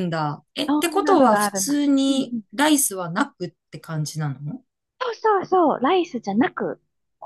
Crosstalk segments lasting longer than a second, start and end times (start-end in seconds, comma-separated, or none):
0.7-2.4